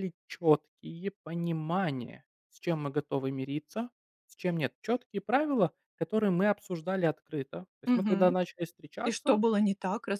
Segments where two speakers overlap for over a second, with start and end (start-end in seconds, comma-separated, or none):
none